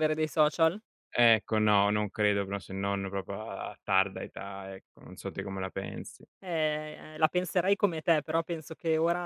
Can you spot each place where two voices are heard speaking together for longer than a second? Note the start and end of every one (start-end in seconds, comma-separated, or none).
none